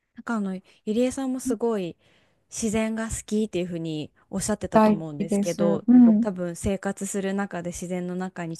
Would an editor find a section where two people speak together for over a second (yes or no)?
yes